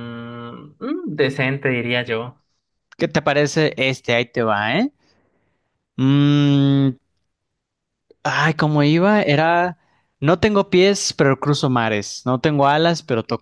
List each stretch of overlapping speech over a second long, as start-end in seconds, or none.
none